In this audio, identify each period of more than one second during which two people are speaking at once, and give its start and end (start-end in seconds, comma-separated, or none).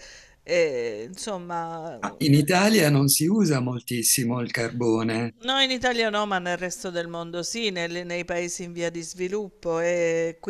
none